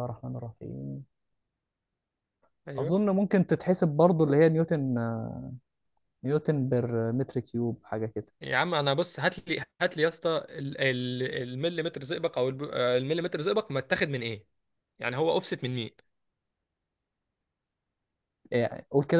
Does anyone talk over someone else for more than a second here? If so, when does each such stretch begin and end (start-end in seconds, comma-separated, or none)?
none